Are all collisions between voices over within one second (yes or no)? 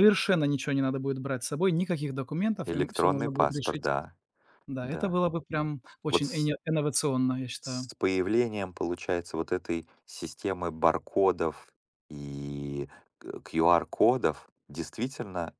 no